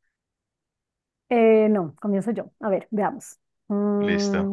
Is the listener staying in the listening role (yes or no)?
yes